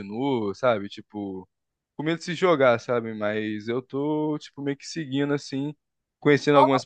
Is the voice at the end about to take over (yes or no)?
no